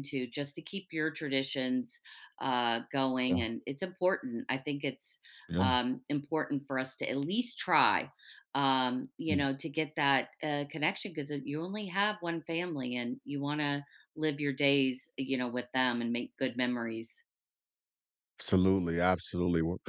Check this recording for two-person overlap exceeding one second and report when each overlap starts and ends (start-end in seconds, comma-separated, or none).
none